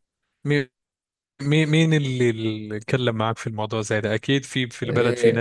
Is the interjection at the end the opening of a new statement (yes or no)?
yes